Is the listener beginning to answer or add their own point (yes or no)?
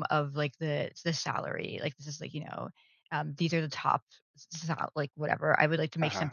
no